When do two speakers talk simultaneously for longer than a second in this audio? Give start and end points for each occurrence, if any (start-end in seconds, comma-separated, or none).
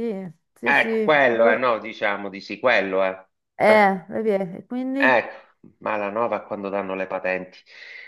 none